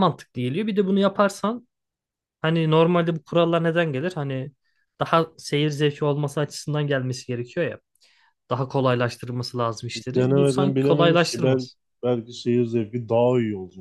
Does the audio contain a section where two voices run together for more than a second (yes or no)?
yes